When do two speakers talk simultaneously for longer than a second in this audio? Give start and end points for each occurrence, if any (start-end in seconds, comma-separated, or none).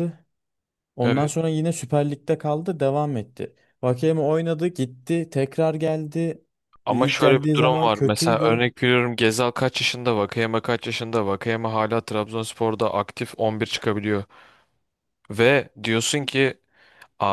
6.9-8.6